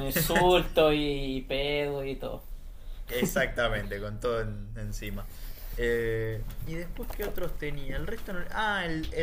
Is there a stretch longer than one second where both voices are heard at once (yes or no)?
no